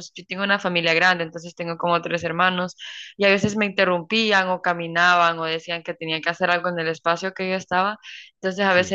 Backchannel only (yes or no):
yes